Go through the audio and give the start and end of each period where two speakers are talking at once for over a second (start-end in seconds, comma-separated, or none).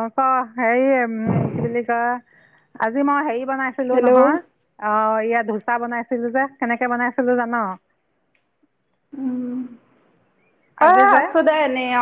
none